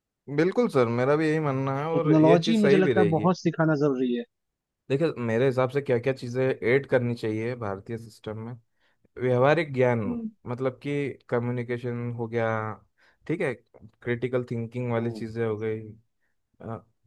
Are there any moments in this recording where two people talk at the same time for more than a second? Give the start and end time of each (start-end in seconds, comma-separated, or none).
1.9-3.3